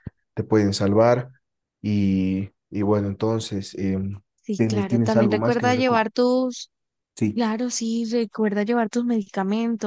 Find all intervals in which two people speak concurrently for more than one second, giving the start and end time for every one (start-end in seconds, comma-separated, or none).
4.5-6.0